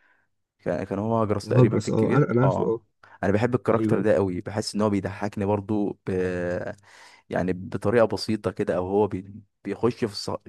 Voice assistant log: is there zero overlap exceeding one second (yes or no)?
no